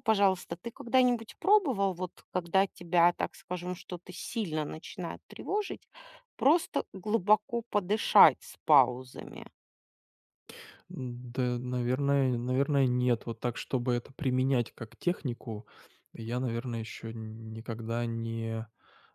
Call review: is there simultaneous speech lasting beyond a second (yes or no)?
no